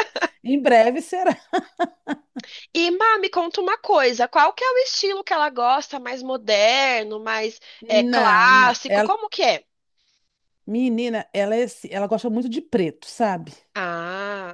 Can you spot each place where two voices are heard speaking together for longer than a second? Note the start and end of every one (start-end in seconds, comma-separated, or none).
7.8-9.1